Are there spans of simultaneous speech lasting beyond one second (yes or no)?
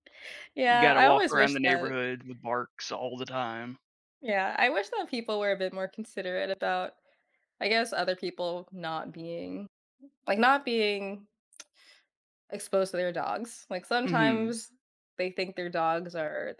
yes